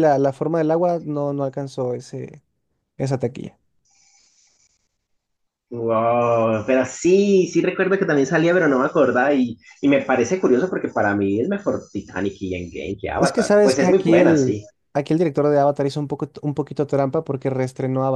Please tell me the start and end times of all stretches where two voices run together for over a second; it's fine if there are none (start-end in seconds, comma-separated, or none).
13.2-14.6